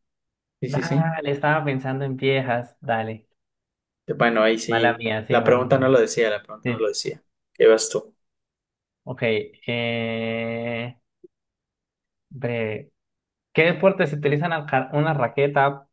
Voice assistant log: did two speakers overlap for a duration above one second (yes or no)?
yes